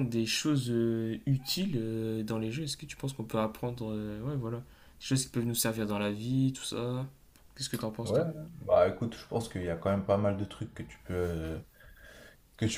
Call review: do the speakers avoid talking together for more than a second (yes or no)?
yes